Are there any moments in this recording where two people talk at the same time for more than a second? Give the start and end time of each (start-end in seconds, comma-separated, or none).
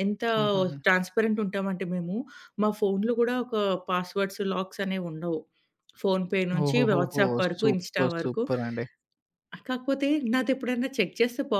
6.6-8.4